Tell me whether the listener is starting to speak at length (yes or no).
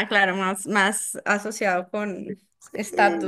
yes